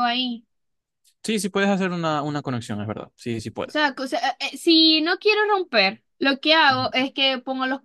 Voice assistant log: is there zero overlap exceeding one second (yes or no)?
yes